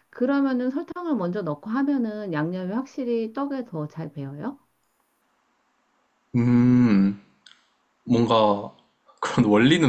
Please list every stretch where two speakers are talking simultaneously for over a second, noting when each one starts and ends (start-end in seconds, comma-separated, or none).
none